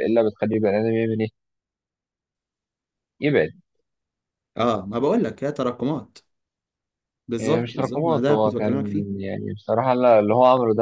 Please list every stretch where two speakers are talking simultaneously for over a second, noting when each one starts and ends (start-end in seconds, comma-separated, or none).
7.4-8.7